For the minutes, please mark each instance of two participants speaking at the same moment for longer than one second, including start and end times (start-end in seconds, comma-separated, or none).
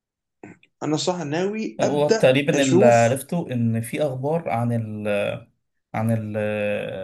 1.8-3.2